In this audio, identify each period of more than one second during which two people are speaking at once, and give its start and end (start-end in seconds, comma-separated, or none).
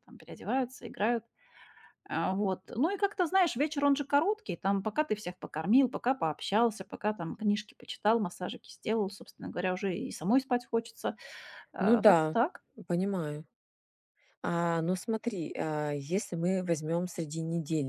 none